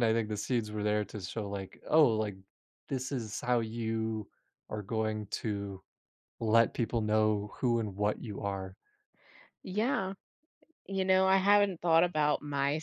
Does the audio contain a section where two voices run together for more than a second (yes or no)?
no